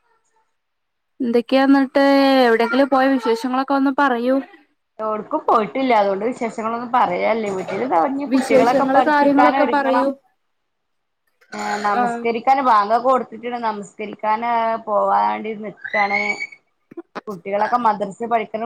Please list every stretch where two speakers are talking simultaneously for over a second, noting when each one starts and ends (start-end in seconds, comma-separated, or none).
8.3-10.1